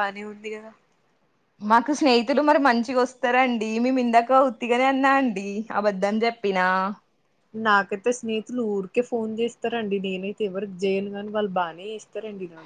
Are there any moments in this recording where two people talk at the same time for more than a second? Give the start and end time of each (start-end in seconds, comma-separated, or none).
none